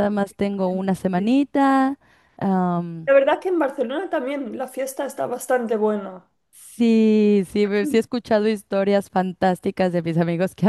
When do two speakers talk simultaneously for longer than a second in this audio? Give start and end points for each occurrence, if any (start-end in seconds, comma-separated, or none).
none